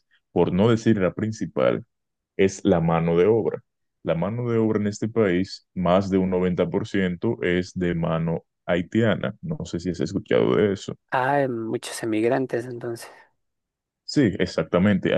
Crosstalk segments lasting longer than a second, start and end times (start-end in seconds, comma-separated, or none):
none